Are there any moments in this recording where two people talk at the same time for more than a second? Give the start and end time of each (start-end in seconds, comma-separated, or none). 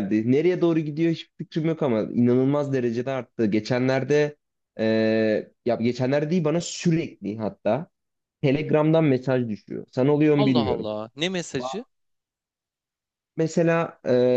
none